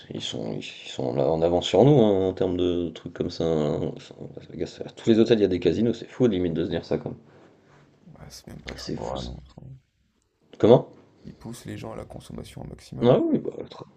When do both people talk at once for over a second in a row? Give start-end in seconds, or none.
none